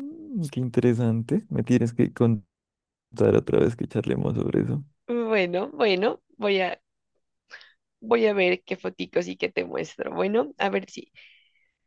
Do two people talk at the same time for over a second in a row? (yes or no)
no